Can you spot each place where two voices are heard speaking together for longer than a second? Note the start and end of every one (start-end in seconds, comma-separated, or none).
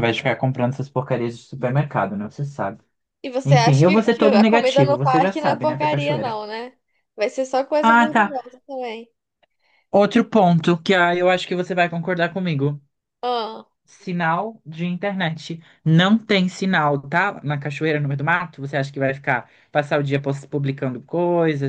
3.4-6.4